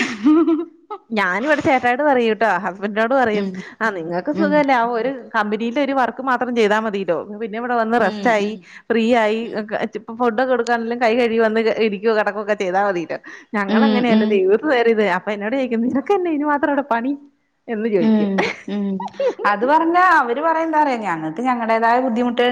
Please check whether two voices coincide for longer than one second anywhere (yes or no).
no